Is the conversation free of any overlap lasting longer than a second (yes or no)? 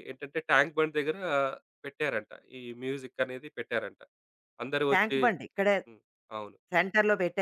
yes